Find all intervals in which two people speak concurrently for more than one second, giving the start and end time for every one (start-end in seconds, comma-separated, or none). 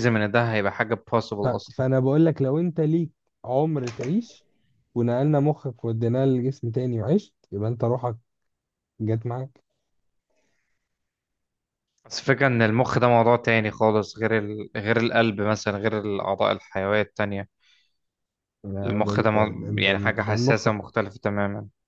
18.8-20.7